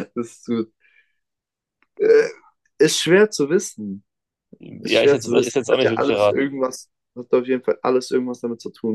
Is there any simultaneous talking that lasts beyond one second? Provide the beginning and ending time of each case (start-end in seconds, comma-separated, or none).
4.8-6.5